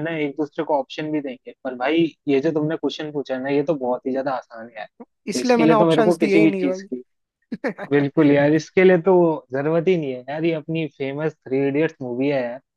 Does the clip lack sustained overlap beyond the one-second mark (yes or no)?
no